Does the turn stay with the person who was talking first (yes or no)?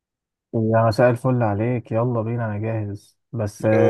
yes